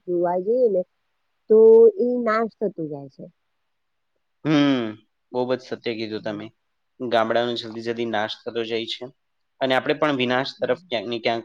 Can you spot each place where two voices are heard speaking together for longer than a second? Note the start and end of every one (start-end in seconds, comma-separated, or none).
none